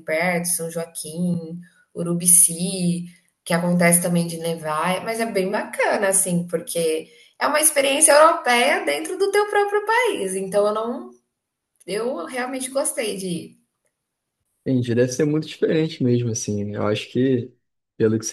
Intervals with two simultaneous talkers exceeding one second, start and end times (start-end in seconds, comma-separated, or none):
none